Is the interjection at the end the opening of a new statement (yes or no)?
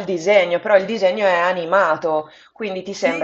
no